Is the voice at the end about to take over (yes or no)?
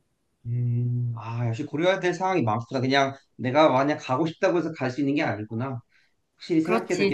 yes